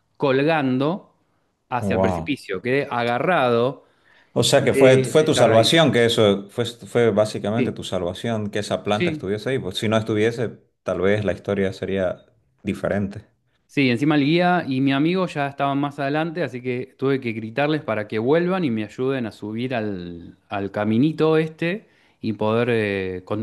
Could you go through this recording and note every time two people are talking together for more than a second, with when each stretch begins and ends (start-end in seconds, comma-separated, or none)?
4.6-5.9